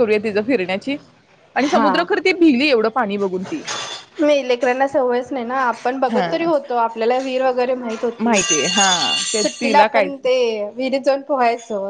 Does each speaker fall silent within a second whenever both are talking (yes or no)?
no